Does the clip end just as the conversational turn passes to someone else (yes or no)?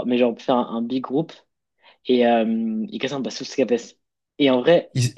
no